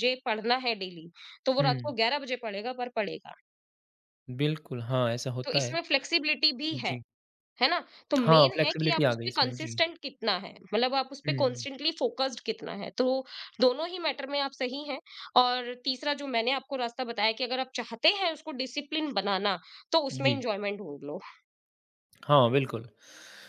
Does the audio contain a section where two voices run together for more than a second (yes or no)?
yes